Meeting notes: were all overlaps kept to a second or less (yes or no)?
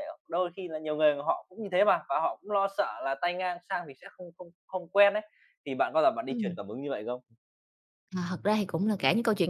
yes